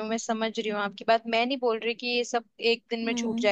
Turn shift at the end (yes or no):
no